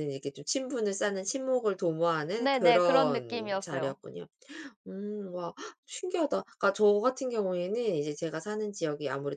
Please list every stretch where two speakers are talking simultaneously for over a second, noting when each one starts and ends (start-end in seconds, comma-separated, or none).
2.4-4.0